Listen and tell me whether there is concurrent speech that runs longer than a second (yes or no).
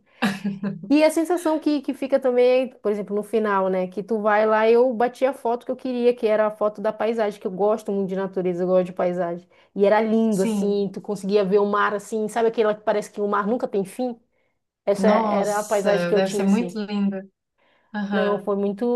yes